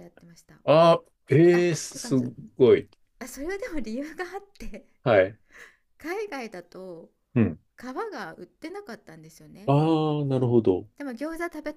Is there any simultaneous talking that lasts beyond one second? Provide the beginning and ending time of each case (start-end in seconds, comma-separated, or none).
none